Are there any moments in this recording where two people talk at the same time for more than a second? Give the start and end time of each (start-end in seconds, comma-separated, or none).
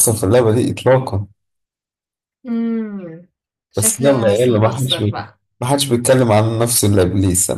3.8-5.4